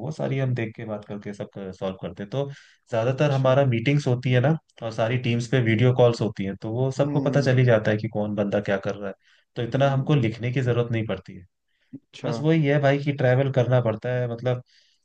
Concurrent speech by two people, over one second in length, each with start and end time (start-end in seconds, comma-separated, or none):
none